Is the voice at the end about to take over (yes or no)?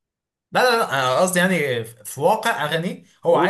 no